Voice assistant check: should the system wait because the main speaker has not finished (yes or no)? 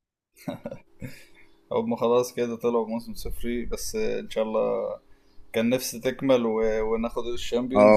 no